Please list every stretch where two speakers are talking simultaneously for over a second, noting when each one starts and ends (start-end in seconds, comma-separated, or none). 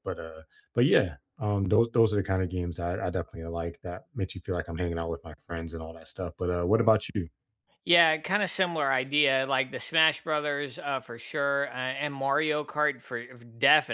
none